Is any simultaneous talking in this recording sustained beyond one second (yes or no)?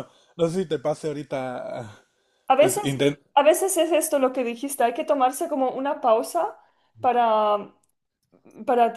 no